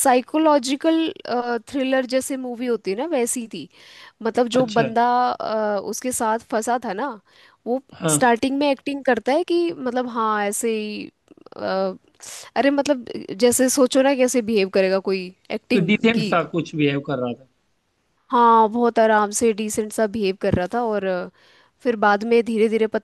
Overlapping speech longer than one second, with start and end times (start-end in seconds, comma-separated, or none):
none